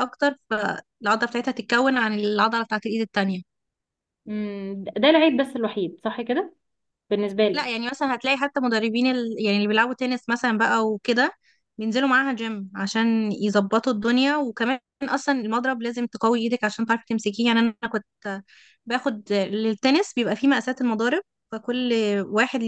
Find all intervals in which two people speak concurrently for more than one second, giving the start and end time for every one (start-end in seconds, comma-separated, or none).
none